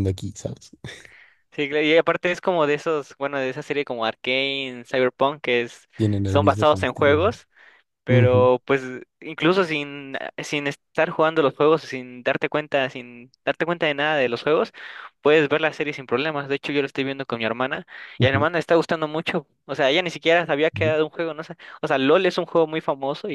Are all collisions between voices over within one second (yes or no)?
no